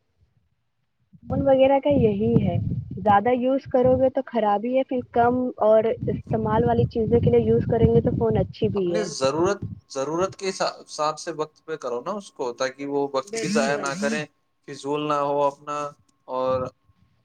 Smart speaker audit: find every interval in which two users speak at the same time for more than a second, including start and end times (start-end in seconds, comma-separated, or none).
none